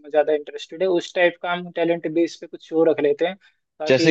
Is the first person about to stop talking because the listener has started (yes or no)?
yes